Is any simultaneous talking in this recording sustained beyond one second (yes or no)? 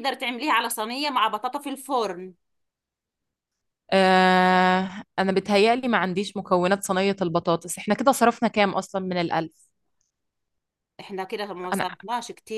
no